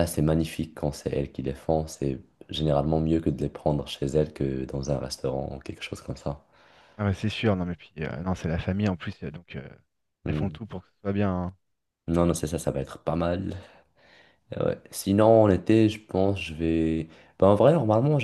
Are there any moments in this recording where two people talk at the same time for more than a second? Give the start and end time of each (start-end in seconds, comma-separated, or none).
none